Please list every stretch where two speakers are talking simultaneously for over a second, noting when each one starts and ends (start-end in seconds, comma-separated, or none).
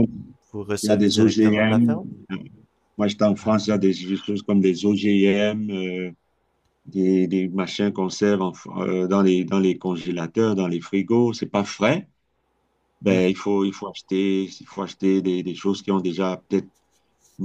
0.8-2.1